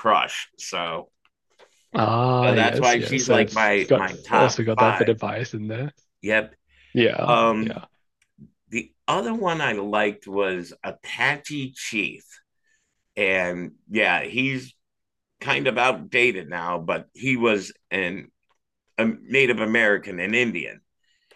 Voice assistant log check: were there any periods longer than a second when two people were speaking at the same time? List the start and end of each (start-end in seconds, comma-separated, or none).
2.4-5.1